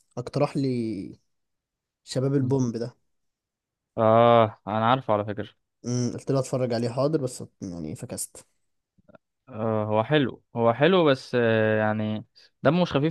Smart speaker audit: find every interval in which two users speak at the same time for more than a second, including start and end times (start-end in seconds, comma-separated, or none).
none